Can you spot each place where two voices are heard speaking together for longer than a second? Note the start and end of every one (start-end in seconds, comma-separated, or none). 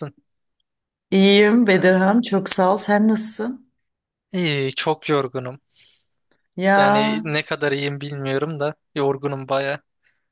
none